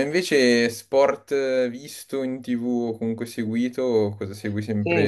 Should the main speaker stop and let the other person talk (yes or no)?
yes